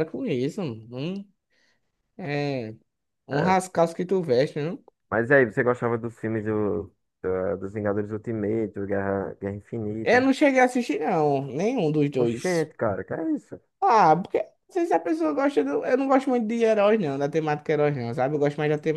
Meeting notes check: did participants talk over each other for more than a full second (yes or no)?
no